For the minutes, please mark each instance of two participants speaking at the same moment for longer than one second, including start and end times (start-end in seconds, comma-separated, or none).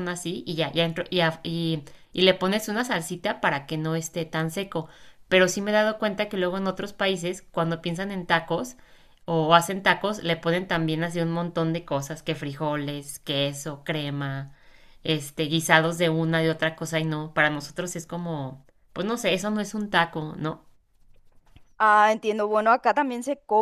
none